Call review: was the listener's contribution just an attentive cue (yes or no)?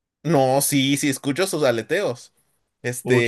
yes